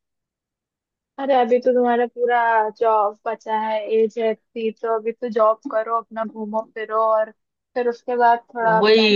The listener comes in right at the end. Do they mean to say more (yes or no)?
yes